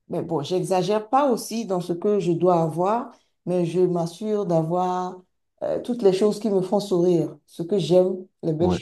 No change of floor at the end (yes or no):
yes